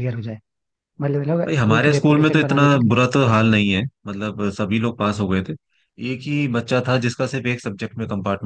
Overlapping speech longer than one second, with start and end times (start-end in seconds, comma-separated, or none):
1.5-3.0